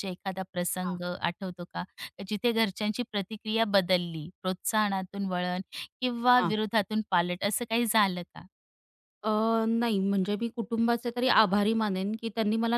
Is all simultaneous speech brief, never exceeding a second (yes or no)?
yes